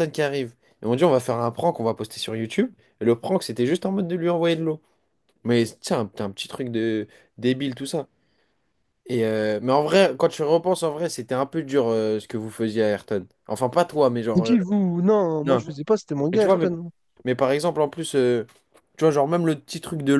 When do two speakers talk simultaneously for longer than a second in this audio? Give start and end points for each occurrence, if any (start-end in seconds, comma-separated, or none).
none